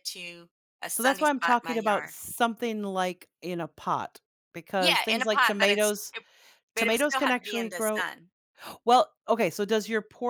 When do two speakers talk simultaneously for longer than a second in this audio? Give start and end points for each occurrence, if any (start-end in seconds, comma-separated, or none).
0.9-2.1, 4.8-6.1, 6.8-8.0